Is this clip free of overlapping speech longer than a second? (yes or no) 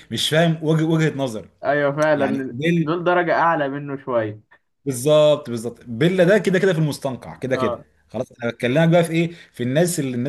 yes